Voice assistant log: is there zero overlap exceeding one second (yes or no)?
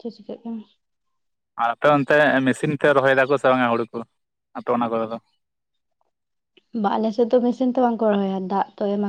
yes